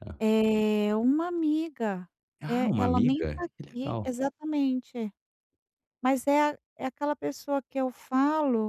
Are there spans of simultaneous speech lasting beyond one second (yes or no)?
yes